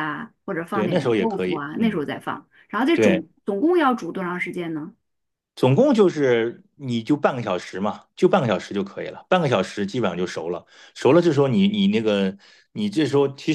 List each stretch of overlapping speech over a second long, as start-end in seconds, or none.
0.7-2.0